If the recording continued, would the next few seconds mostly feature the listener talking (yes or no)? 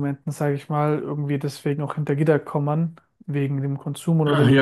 yes